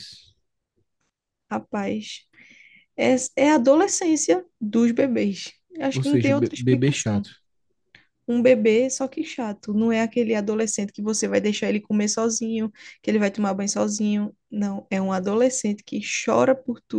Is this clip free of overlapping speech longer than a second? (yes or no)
no